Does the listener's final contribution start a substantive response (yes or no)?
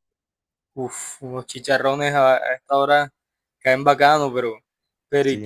no